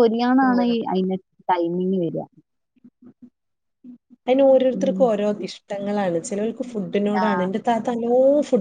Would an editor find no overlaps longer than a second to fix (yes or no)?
yes